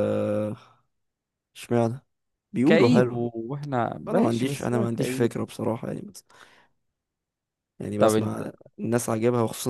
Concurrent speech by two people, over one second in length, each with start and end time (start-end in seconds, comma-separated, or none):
4.1-5.3